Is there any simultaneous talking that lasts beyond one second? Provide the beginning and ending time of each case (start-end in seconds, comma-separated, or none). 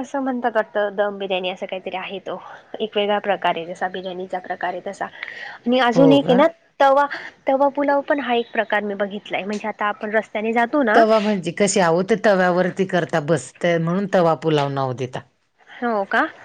none